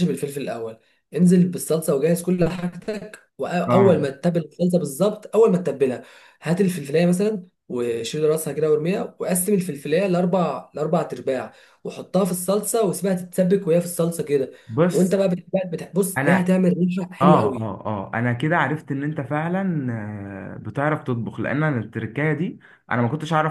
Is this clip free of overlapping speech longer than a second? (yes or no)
yes